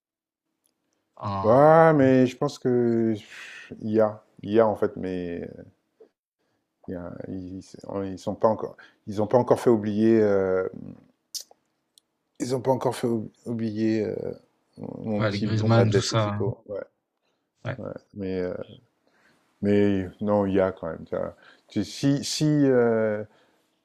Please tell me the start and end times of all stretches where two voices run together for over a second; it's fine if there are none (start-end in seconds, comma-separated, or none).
15.2-16.4